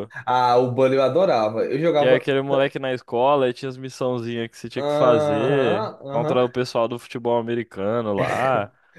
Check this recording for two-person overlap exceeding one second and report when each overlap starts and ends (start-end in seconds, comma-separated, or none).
4.8-6.6